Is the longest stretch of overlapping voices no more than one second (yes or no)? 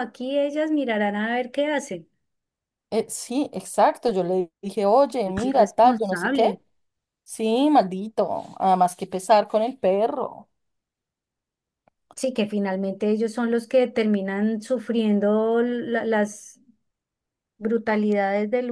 no